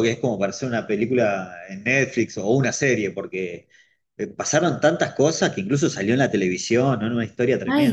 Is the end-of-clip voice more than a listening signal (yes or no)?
yes